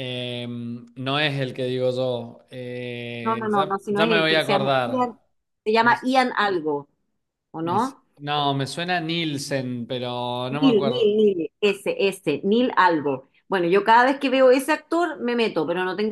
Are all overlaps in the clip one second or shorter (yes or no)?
no